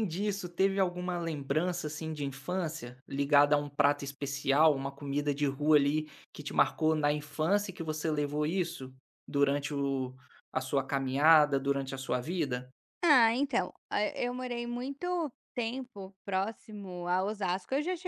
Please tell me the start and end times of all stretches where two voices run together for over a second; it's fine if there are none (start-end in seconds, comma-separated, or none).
none